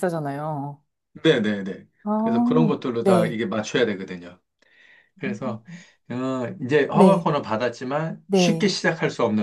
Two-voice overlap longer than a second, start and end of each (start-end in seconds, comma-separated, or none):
2.0-3.4